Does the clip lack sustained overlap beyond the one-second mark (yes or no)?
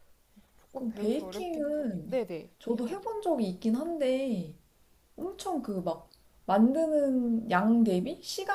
no